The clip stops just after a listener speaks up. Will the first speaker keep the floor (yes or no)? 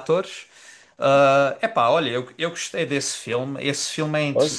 yes